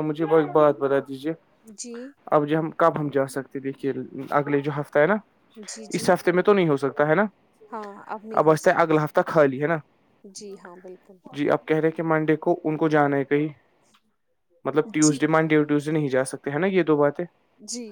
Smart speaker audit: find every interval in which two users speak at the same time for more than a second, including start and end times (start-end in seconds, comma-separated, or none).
none